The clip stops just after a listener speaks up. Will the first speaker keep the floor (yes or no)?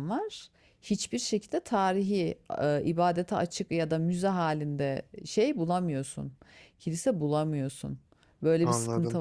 yes